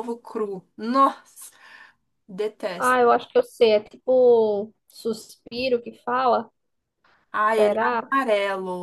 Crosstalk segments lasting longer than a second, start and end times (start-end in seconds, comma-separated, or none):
none